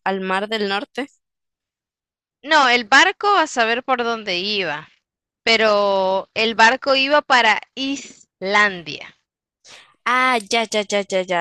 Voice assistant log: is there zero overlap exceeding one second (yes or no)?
yes